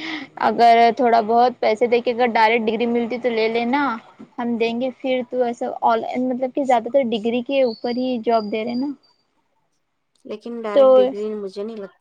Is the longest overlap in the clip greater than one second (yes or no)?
no